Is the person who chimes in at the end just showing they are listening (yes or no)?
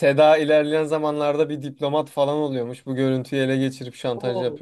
no